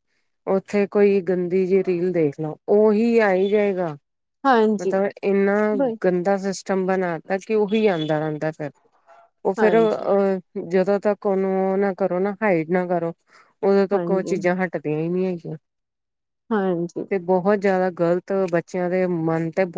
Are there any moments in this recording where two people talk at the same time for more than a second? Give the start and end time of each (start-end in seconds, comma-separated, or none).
none